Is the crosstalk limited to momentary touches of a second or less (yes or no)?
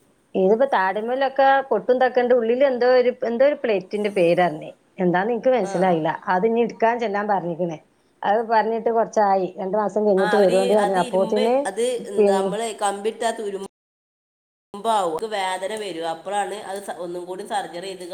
yes